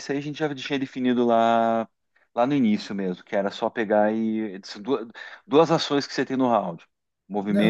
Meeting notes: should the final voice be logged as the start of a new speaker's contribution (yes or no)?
yes